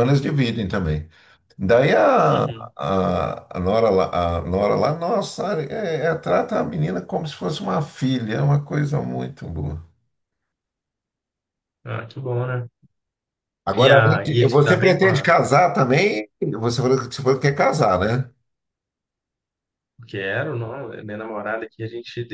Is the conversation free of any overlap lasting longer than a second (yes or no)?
no